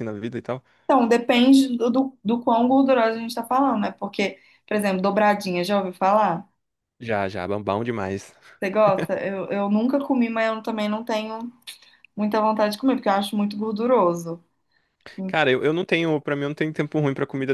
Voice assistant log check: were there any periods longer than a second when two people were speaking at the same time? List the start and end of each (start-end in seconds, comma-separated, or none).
none